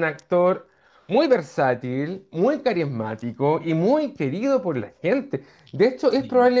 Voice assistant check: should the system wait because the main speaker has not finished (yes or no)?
yes